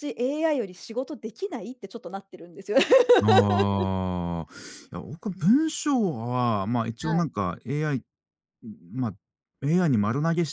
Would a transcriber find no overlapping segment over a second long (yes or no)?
yes